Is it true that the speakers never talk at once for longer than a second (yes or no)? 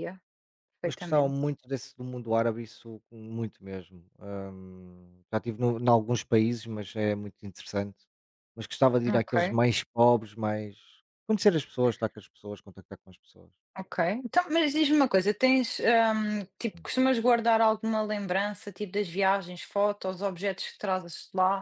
yes